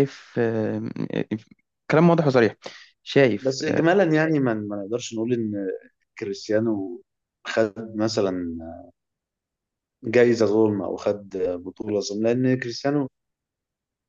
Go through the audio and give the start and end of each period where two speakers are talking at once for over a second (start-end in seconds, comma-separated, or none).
none